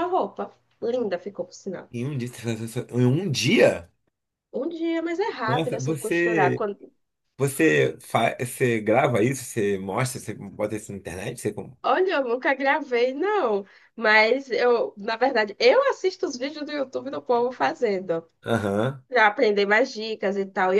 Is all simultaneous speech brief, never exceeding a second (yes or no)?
no